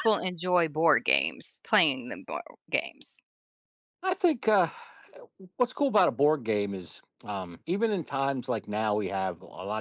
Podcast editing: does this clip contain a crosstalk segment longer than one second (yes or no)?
no